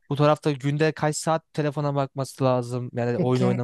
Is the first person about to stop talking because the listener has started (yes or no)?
no